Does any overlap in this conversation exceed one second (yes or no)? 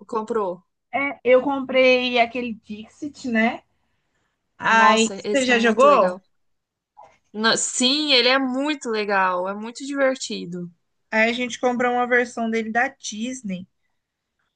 yes